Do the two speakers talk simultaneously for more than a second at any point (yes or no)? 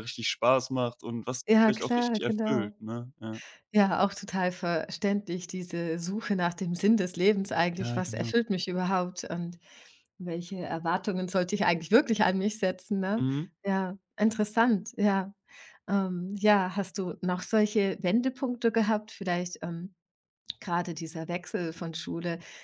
yes